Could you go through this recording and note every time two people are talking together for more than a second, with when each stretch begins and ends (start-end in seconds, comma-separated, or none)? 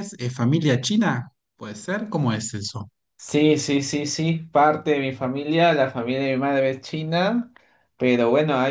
none